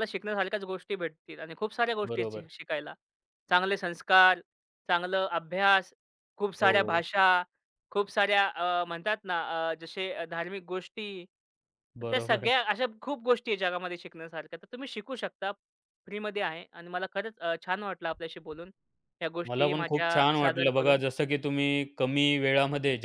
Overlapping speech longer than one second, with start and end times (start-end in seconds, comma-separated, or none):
19.5-21.0